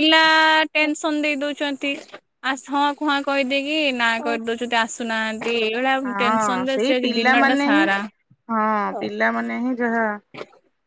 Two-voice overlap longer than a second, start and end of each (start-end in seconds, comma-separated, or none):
6.1-7.8